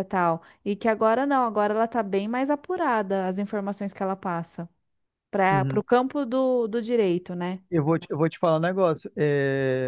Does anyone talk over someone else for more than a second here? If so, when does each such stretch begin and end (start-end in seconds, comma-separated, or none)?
none